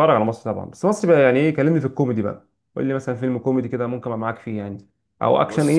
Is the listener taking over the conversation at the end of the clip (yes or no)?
no